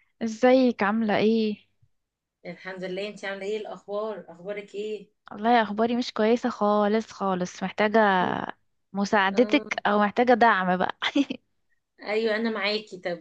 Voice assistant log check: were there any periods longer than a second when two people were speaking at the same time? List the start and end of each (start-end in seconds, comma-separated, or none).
none